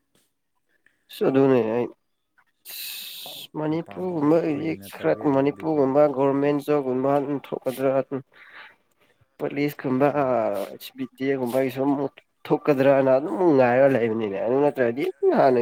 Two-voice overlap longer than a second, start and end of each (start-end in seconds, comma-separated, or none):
3.7-5.8